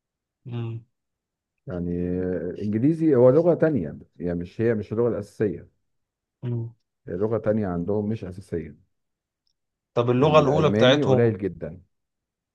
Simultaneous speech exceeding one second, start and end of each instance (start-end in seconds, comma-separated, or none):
10.2-11.4